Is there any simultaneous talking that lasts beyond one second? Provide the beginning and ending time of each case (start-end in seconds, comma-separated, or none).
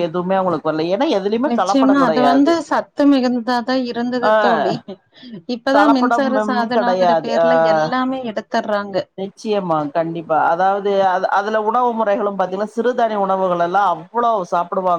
5.8-7.4